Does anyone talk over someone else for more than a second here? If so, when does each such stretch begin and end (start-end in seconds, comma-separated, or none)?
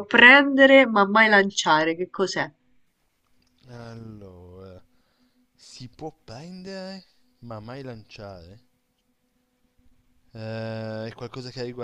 none